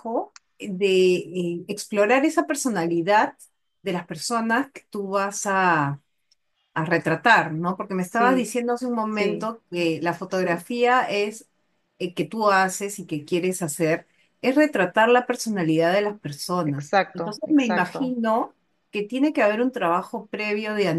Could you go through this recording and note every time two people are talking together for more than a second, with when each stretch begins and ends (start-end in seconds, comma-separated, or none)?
16.7-18.1